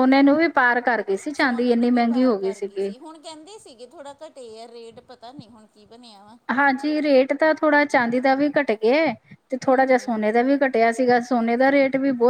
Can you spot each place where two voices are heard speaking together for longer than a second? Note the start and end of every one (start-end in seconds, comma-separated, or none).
1.3-2.9